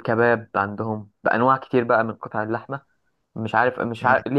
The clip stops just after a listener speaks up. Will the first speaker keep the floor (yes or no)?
yes